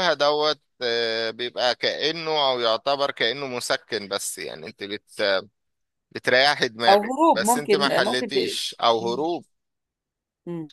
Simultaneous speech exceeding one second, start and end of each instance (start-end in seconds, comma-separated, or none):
6.9-8.4